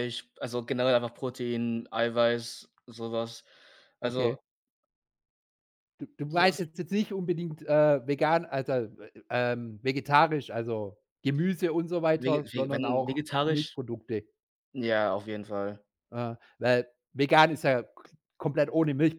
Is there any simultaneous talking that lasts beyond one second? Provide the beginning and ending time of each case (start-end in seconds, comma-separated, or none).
12.2-13.8